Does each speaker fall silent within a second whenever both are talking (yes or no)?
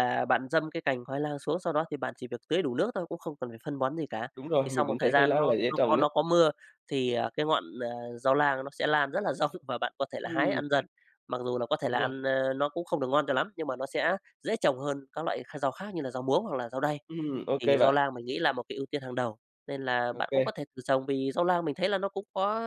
no